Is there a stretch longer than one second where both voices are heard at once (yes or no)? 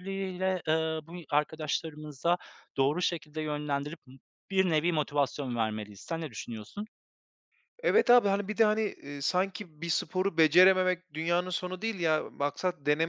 no